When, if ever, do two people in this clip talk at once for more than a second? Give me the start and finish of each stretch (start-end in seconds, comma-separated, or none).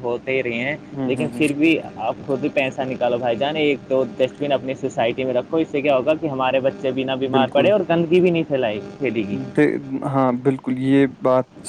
none